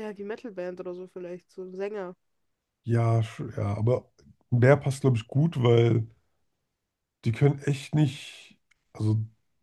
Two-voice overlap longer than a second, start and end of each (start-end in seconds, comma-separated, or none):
none